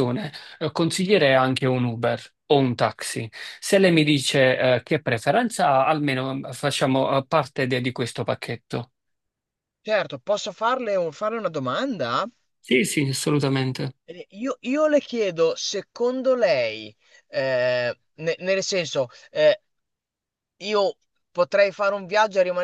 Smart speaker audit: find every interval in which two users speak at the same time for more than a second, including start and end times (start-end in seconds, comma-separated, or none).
none